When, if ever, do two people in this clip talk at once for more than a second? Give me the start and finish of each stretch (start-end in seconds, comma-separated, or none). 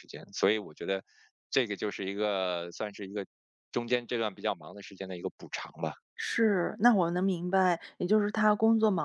none